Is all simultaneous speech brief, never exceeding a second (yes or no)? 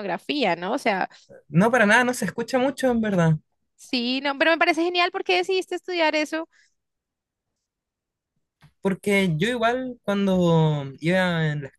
yes